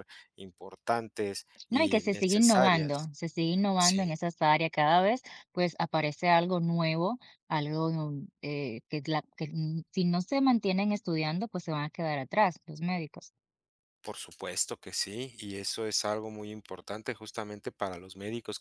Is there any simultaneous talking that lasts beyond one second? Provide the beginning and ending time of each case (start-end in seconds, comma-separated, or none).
1.7-3.1